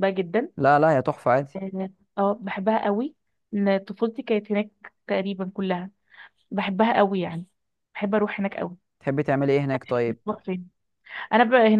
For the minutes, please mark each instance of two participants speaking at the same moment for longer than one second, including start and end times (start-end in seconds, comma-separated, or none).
none